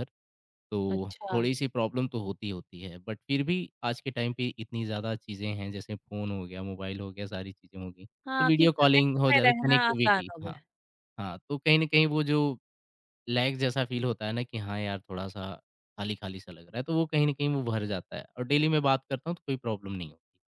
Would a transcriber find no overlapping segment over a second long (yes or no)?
no